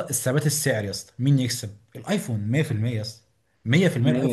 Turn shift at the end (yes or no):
yes